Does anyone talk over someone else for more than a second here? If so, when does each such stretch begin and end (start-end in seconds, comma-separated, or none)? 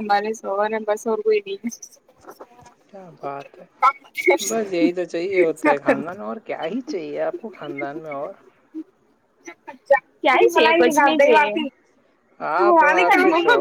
none